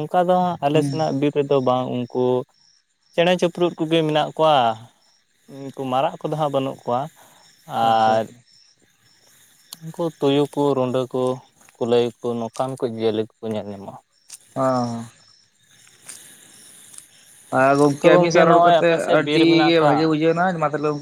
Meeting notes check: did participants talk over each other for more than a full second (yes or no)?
yes